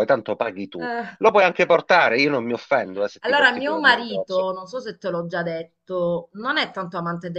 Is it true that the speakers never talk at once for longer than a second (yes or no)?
no